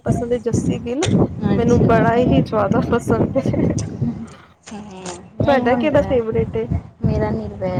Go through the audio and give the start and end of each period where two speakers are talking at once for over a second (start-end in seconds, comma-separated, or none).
none